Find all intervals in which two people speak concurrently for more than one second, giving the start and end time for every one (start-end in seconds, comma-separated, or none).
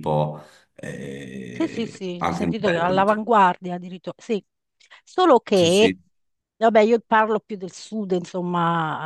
1.5-3.2